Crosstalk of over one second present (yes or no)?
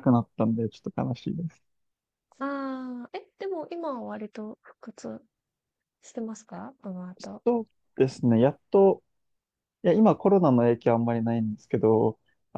no